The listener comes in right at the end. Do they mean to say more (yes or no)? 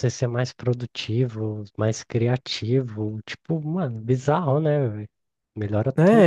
yes